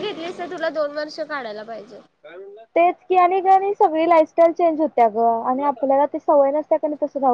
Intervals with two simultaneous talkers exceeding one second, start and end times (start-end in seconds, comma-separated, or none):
none